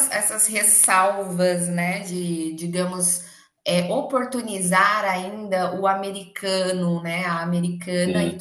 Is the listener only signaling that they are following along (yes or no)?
yes